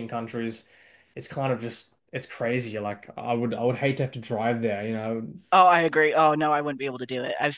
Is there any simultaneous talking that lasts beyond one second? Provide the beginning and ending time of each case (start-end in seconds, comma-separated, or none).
none